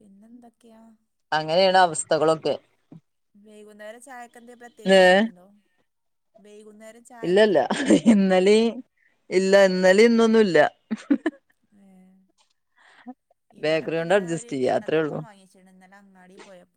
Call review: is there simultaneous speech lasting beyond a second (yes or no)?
yes